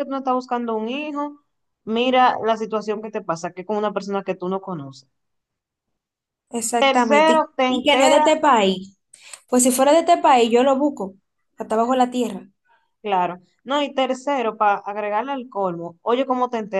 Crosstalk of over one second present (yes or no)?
yes